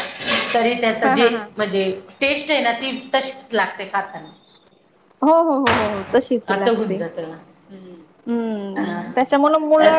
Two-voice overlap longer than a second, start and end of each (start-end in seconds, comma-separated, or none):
none